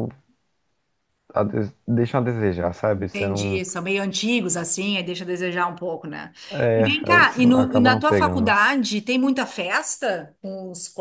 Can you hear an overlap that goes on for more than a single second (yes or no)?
yes